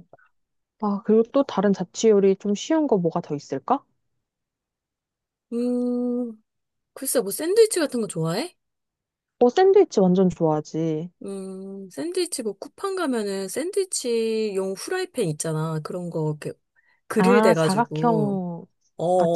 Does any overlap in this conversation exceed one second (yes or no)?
yes